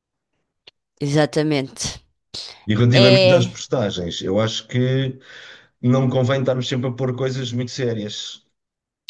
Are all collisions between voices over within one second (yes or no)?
yes